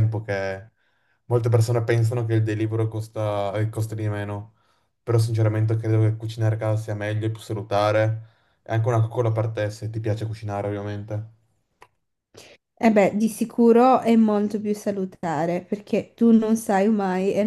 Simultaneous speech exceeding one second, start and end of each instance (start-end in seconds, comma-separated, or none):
none